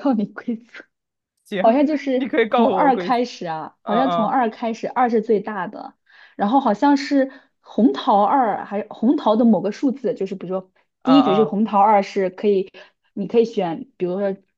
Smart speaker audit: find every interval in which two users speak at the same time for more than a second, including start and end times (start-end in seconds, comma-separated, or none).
1.6-3.2